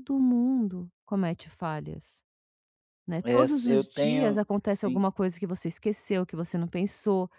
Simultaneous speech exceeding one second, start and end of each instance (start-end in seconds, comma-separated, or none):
3.2-5.0